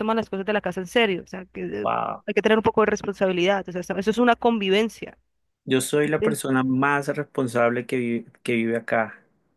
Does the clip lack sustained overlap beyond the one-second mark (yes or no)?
yes